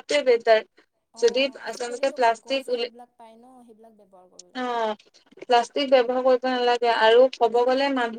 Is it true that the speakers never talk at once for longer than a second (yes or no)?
no